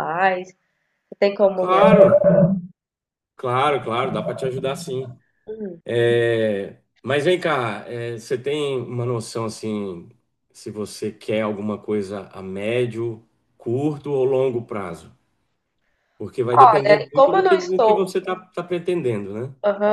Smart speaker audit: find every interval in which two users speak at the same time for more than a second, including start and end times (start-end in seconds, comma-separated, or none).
16.5-18.1